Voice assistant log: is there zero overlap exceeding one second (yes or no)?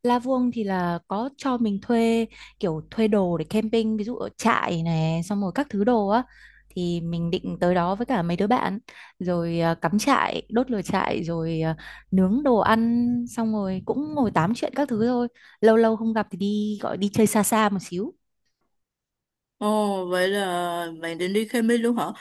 yes